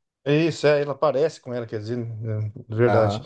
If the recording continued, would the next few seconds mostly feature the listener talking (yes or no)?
yes